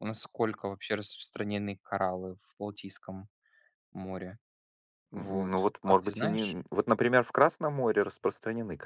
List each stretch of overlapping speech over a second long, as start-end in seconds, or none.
5.2-6.6